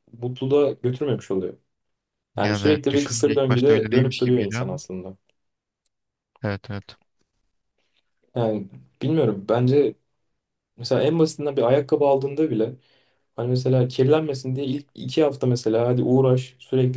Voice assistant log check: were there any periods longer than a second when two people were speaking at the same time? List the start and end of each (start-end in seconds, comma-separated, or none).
2.4-4.8